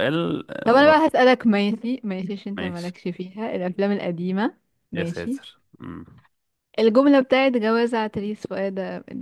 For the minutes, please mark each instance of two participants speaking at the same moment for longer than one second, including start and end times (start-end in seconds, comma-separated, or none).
none